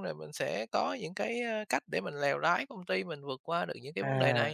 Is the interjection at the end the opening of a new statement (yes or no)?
yes